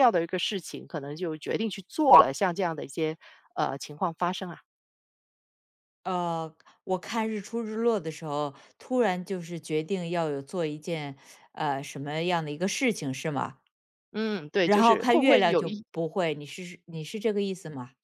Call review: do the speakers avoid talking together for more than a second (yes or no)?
no